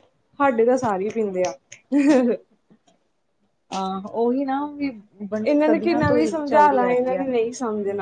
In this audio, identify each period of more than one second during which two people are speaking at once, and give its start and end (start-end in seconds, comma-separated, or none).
5.5-7.2